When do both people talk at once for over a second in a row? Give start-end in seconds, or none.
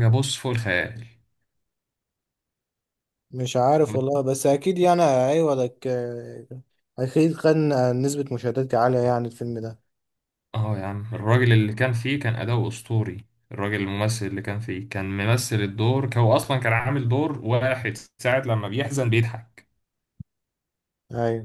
none